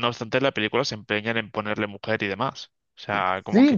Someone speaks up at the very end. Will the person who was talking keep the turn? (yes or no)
no